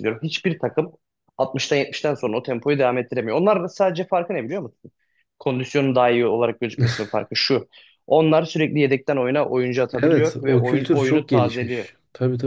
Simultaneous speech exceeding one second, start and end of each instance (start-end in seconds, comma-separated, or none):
9.9-11.9